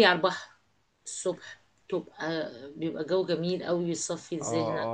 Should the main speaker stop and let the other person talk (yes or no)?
yes